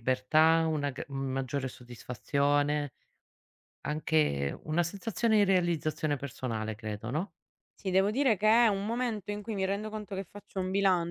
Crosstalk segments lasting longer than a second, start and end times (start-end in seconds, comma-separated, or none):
none